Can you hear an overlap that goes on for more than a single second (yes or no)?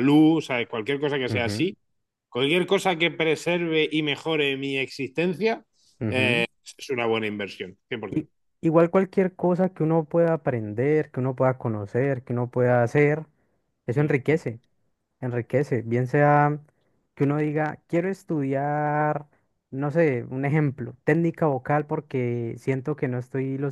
no